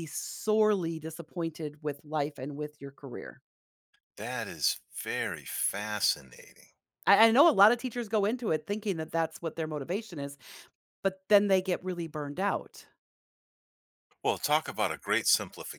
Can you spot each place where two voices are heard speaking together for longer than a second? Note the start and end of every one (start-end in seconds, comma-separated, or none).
none